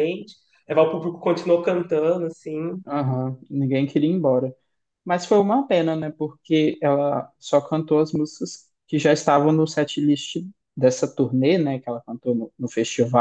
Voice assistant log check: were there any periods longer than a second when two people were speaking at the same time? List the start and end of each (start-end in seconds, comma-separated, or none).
none